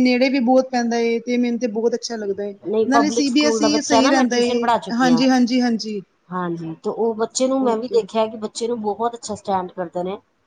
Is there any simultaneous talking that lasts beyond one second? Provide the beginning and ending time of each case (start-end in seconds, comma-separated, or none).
2.9-5.2